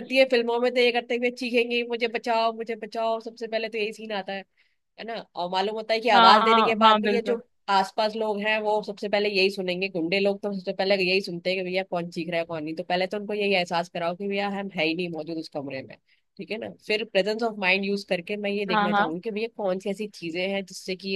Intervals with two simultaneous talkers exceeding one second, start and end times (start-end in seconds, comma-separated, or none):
6.1-7.4